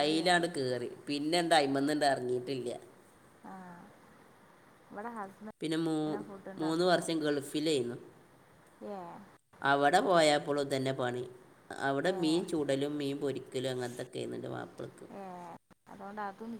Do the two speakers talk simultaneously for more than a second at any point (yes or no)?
no